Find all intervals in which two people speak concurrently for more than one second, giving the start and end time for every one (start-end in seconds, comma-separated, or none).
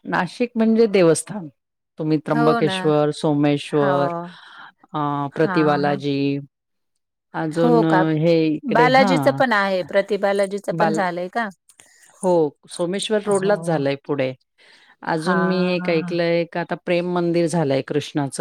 none